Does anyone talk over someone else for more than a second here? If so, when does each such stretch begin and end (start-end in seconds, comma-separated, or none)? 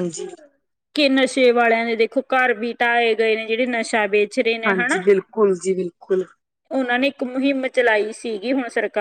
none